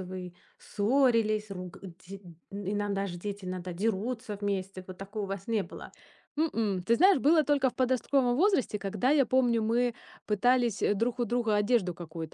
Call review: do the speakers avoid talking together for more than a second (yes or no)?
yes